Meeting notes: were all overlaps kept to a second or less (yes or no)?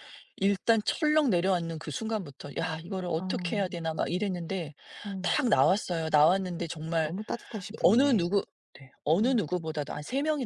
yes